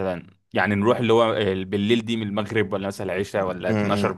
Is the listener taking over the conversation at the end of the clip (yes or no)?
yes